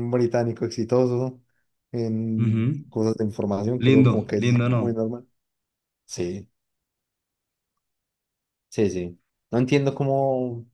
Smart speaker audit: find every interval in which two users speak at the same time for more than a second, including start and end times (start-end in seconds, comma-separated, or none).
3.8-5.0